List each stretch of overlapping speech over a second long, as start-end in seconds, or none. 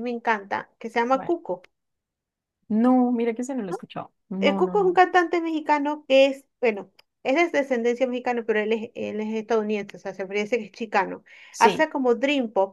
none